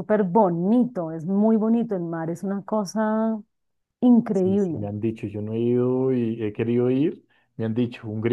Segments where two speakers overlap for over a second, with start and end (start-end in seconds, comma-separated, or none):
none